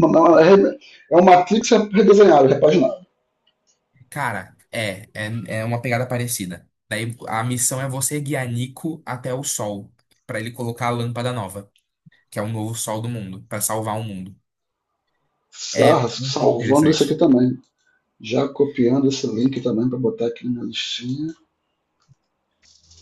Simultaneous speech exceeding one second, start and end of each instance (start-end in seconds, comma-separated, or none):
15.8-17.2